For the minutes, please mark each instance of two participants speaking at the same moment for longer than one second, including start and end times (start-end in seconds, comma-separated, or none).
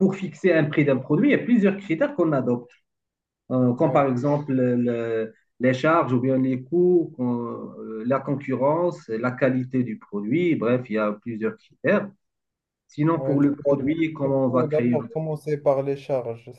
13.2-15.2